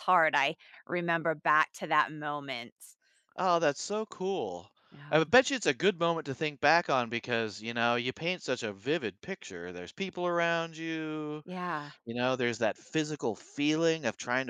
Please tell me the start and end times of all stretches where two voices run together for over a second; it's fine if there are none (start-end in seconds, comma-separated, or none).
none